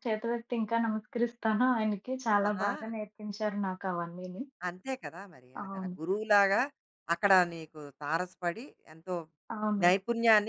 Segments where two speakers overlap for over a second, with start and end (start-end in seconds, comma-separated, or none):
none